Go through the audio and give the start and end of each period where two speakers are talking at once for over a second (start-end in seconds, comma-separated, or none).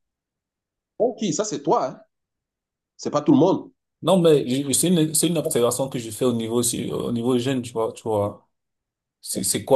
none